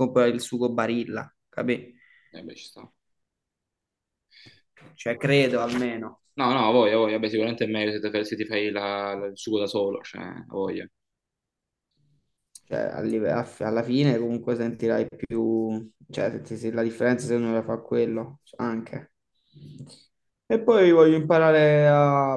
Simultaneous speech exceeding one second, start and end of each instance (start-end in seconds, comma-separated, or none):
none